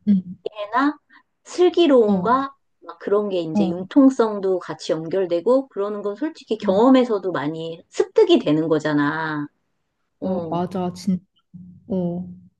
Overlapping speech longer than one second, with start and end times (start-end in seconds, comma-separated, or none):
none